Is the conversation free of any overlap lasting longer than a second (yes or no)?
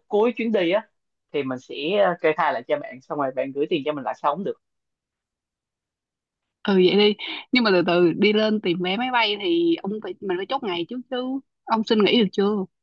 yes